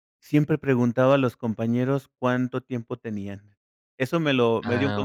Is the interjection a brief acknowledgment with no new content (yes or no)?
yes